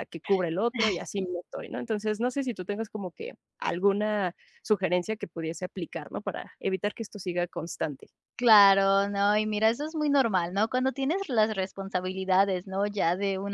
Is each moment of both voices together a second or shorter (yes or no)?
yes